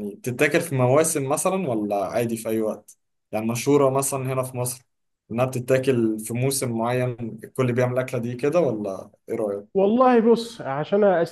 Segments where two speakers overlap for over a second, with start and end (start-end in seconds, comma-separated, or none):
none